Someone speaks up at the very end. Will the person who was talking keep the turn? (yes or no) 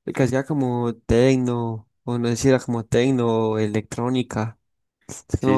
no